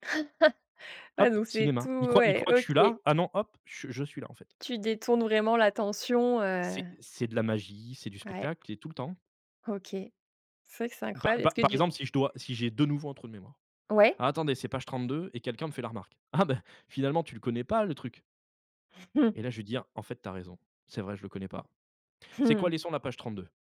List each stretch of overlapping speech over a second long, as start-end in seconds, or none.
1.2-2.9